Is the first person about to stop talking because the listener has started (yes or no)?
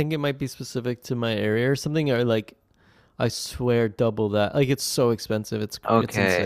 yes